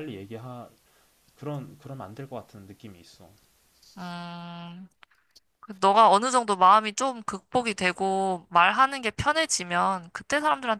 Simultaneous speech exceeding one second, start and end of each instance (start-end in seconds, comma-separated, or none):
none